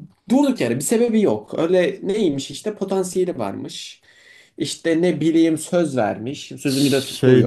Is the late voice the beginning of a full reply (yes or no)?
yes